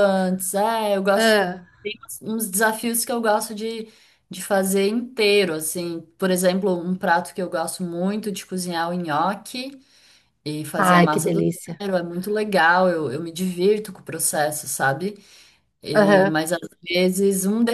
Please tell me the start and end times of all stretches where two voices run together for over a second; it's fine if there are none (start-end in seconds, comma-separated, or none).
none